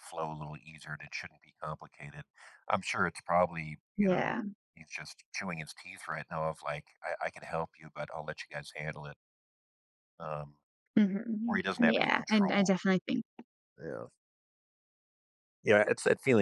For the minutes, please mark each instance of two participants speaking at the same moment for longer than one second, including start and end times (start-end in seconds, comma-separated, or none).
11.4-12.8